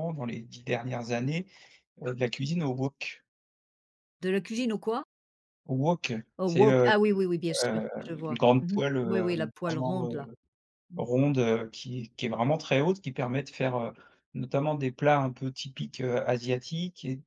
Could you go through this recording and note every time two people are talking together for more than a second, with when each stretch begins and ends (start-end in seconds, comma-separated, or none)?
7.6-10.3